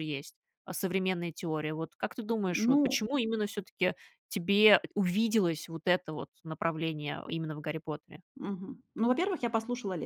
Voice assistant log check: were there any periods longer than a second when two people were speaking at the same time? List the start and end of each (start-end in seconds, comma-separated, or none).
none